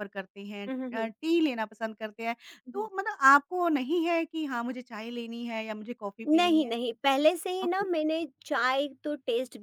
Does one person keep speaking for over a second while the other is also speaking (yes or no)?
no